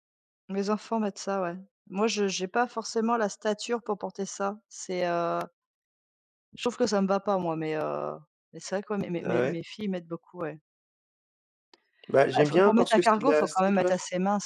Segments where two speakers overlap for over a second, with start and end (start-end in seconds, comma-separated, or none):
12.3-13.9